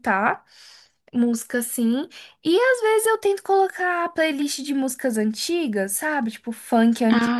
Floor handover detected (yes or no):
no